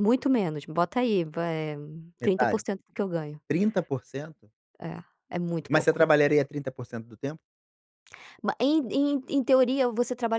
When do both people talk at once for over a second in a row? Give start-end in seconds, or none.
none